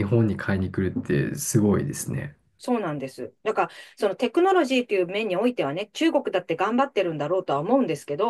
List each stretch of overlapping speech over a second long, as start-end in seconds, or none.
none